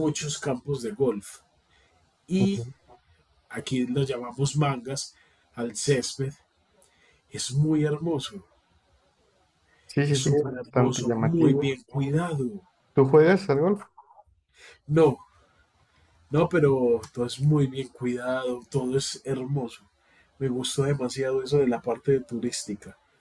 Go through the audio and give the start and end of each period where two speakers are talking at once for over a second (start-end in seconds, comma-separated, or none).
10.1-11.7